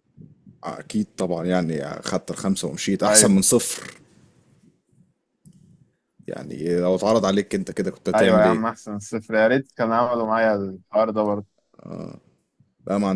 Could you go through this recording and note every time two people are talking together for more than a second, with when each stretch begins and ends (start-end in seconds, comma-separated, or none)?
none